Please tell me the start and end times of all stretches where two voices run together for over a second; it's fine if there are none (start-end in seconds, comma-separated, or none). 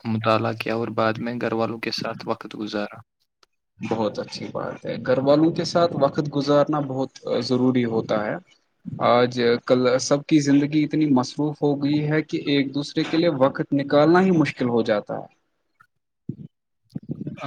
none